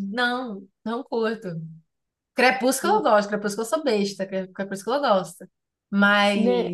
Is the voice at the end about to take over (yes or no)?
yes